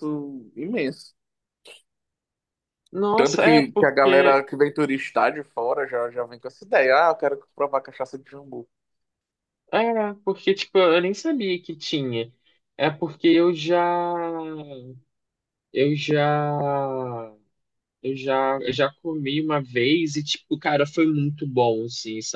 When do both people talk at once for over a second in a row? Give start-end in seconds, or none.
3.1-4.4